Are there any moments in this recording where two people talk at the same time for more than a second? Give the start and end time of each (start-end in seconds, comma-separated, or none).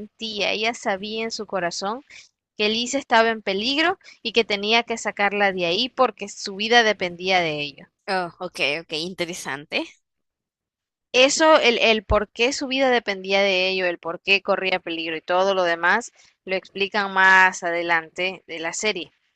none